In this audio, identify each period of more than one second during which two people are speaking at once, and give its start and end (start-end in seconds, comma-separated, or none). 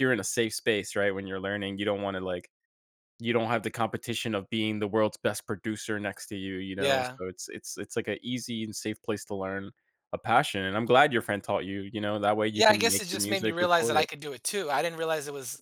12.5-14.1